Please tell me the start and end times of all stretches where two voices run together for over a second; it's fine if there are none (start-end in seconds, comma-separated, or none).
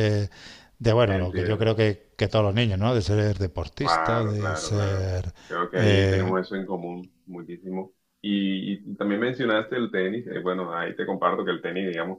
3.8-5.1